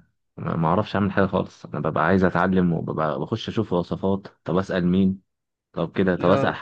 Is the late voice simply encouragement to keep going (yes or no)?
yes